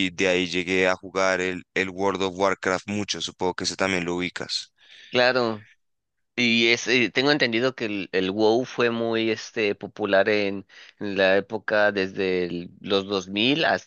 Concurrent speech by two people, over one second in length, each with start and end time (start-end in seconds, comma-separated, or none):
none